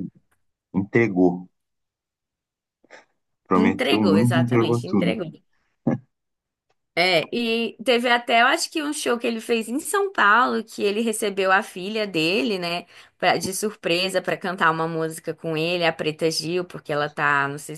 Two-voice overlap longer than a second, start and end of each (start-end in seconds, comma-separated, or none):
3.6-5.2